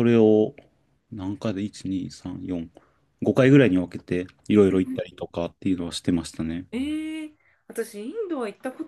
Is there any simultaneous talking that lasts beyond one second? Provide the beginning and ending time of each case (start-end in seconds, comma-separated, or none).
none